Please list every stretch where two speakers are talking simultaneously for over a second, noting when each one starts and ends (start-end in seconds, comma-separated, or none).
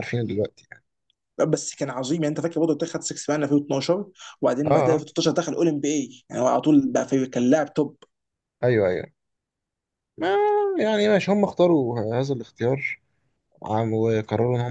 none